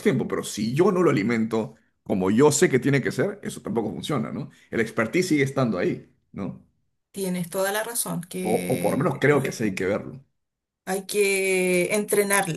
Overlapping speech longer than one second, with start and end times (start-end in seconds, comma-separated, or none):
8.5-9.9